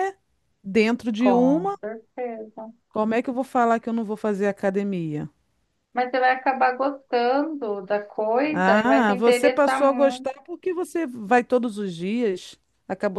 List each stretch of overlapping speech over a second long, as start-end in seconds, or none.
8.5-10.3